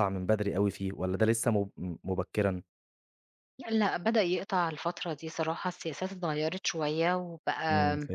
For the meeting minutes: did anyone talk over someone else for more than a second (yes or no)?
no